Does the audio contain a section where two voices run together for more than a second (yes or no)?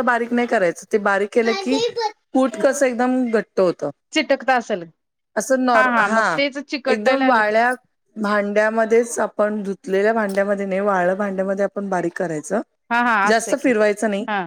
no